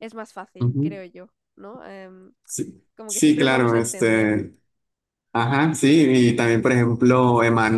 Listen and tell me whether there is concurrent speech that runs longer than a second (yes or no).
yes